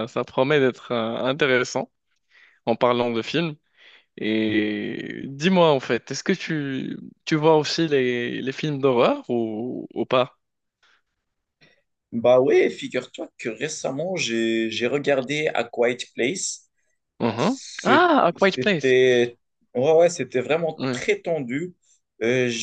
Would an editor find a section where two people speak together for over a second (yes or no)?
yes